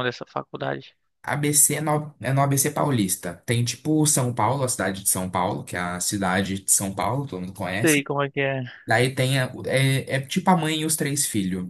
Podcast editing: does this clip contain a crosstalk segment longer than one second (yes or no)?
no